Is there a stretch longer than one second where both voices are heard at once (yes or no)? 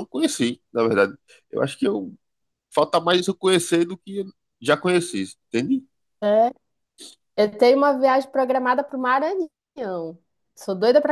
no